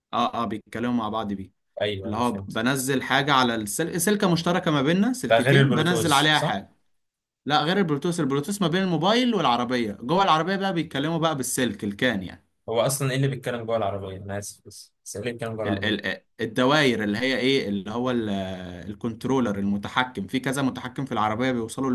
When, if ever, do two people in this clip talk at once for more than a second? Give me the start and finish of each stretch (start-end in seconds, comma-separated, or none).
5.3-6.6